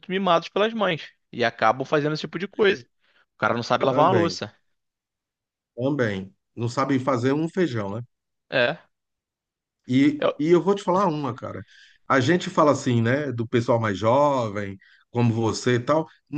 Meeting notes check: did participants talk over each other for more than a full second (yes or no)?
no